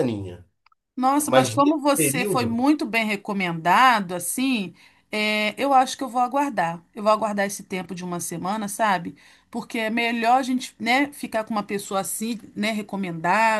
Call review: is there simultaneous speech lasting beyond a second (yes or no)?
yes